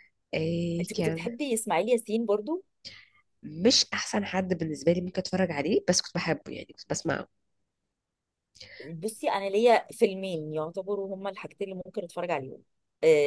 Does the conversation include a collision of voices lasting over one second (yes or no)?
no